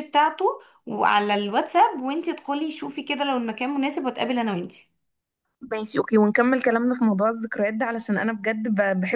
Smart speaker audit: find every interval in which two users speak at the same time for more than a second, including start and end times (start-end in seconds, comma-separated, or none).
none